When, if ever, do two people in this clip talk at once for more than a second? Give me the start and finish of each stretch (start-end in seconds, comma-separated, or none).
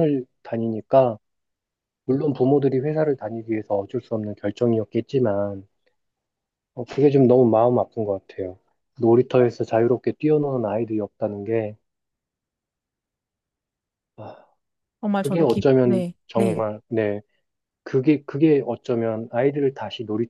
15.2-16.6